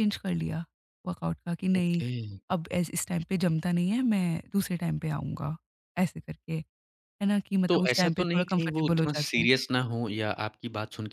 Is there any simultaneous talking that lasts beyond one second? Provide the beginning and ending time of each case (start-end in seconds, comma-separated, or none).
7.7-9.5